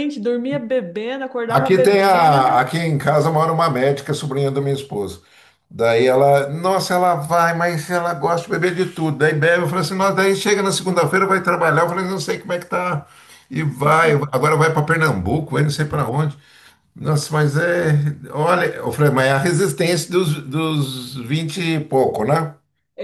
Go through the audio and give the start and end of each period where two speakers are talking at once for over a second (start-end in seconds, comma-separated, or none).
1.5-2.7